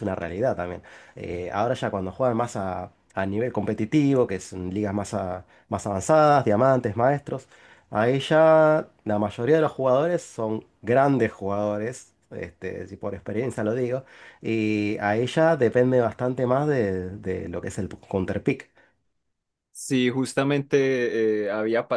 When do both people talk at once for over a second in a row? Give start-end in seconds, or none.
none